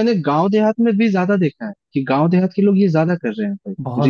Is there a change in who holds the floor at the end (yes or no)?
yes